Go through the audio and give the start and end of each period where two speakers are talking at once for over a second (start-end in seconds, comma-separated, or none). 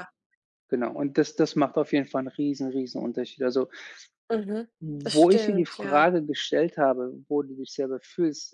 4.8-6.1